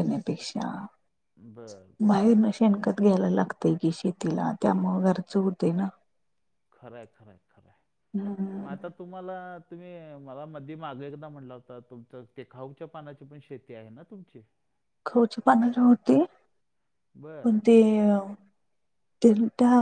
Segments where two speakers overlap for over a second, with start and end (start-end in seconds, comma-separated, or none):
none